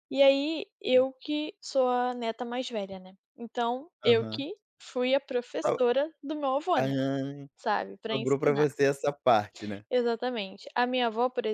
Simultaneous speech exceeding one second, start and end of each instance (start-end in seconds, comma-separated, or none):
none